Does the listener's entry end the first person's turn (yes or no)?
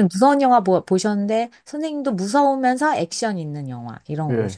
yes